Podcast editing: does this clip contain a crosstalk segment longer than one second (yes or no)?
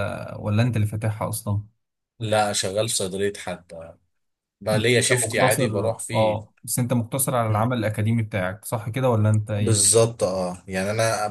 yes